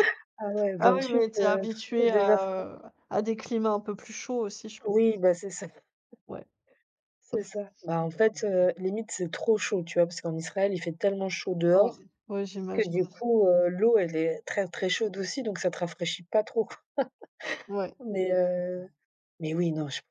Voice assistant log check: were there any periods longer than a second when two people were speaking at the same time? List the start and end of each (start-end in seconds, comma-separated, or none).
0.8-2.7